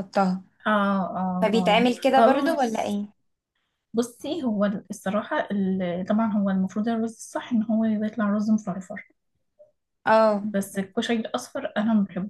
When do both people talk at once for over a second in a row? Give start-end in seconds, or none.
1.4-2.9